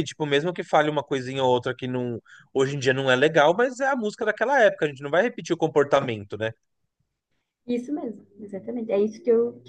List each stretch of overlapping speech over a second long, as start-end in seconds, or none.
none